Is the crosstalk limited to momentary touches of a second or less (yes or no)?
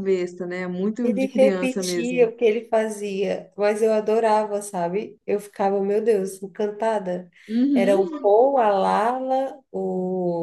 no